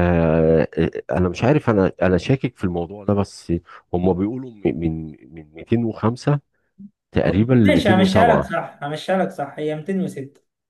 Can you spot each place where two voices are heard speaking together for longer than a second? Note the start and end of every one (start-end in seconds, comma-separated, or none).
7.2-8.6